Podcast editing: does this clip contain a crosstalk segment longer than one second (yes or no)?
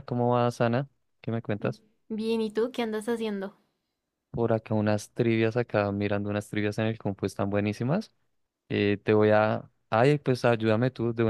no